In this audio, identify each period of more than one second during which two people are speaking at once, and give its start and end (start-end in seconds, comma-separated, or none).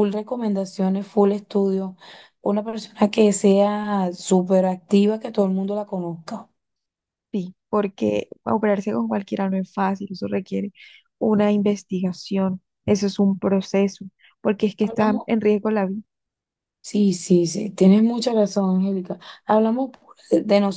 none